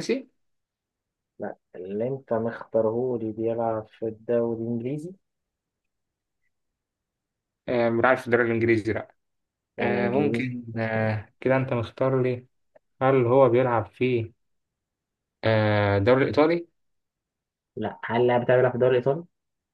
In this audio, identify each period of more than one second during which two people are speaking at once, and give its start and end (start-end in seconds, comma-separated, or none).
9.8-11.2